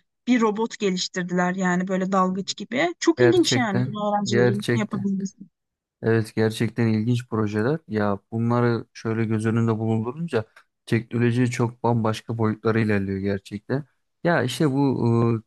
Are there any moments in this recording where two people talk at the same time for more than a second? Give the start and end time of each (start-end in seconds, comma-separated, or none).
3.2-5.1